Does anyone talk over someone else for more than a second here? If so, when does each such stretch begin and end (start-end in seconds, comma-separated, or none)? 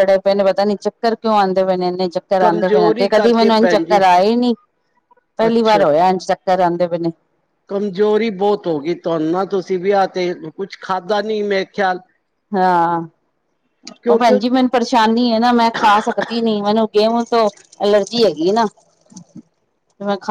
2.4-4.0